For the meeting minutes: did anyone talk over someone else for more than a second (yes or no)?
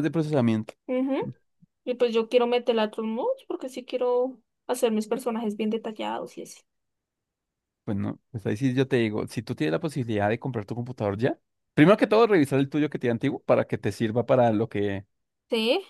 no